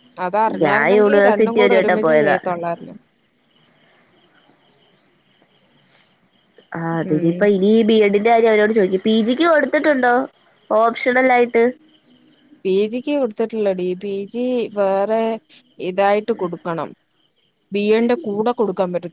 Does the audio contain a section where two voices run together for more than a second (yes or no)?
yes